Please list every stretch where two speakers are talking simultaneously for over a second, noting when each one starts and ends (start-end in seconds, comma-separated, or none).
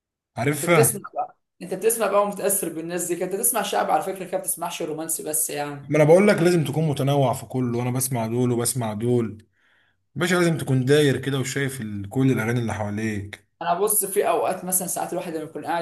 none